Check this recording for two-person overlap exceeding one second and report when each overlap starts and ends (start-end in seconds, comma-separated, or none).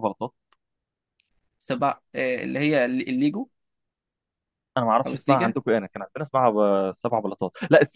none